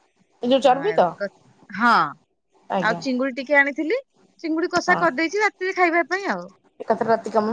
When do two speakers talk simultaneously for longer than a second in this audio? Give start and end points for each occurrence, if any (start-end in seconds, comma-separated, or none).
none